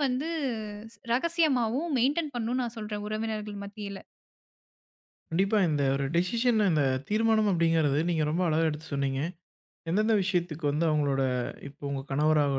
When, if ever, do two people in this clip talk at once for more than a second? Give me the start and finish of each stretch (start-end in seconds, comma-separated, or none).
none